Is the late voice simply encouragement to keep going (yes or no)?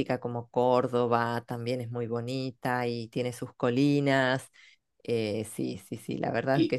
no